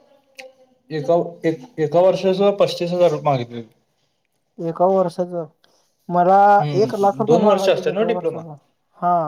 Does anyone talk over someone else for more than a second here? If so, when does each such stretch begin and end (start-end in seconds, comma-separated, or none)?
6.8-8.4